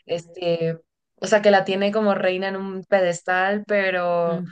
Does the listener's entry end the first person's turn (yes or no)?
no